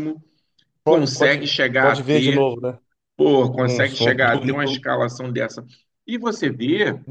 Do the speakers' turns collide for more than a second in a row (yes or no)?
yes